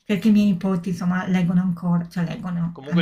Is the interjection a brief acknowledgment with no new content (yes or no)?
no